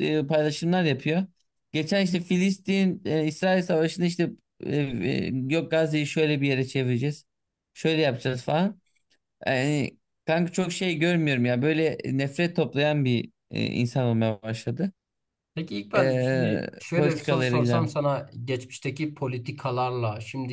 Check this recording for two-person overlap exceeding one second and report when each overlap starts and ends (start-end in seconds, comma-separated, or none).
15.9-17.9